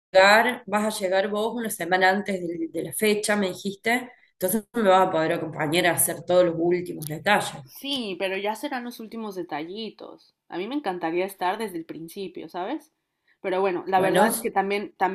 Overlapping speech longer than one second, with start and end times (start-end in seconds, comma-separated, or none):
none